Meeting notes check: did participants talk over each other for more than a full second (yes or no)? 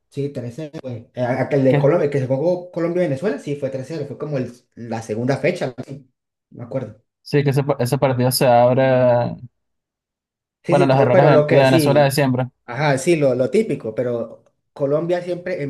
yes